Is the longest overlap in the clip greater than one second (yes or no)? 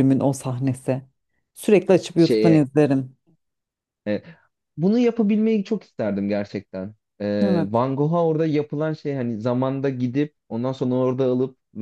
no